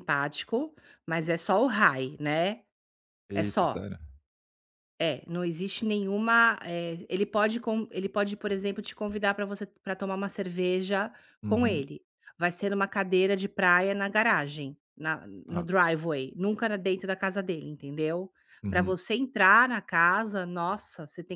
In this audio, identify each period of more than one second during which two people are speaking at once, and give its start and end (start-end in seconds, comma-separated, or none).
none